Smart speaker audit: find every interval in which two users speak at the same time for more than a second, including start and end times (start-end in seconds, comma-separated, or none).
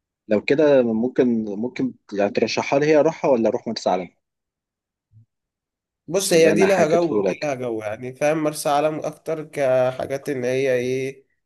6.3-7.5